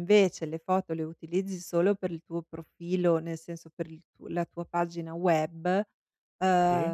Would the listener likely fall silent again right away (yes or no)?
yes